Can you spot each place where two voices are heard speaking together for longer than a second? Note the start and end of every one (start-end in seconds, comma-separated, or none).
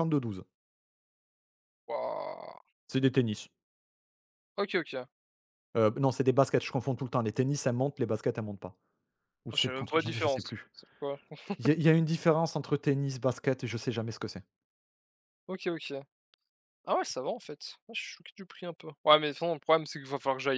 9.5-10.7